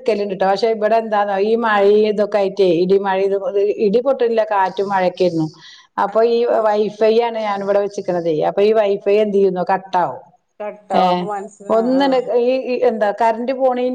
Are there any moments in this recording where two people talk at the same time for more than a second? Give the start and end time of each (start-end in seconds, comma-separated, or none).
none